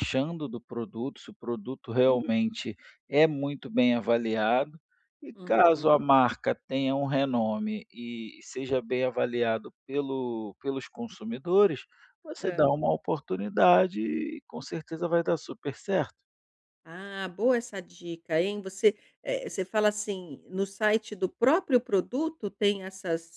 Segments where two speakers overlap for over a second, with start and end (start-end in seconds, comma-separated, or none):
none